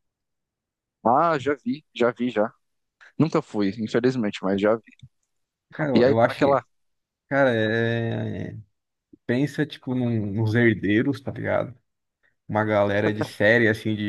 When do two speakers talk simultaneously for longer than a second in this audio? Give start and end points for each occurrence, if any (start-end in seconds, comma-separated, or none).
none